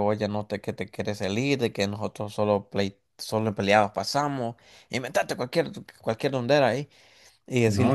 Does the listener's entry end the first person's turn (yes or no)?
no